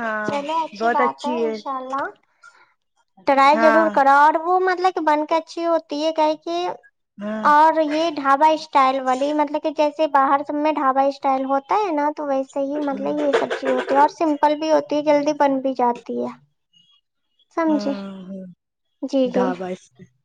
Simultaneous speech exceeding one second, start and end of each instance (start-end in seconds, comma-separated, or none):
none